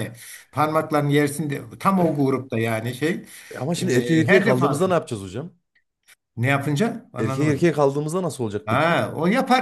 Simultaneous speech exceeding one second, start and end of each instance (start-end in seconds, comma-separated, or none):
3.8-5.0